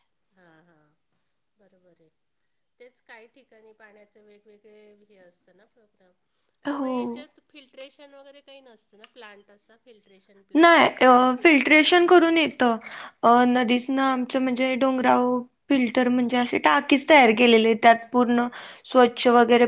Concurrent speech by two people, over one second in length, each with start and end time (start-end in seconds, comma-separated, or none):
10.6-12.4